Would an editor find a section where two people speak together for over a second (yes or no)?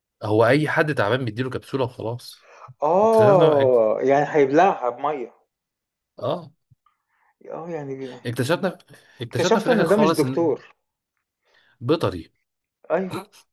yes